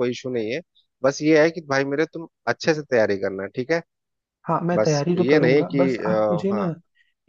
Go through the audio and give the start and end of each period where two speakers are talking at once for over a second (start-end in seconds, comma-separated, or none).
4.7-6.6